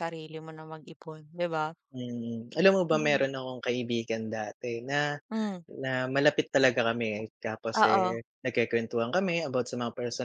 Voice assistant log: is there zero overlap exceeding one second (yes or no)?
yes